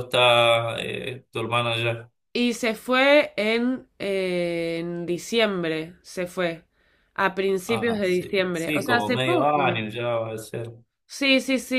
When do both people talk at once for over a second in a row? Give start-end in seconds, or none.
7.7-9.6